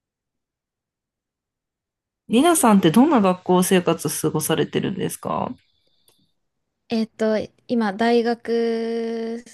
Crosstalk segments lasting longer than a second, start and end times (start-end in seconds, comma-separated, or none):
none